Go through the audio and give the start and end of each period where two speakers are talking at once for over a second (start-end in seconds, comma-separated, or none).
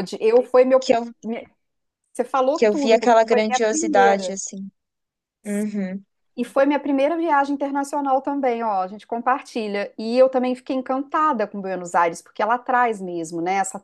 2.5-4.4